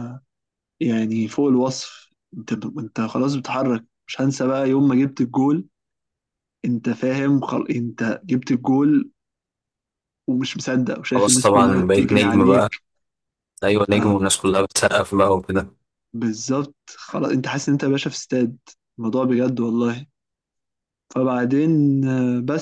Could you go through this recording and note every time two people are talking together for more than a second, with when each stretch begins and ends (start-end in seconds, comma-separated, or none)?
11.1-12.6